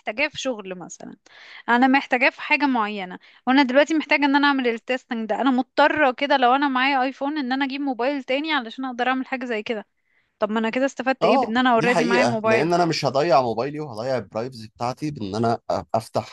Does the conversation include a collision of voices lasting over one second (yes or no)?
yes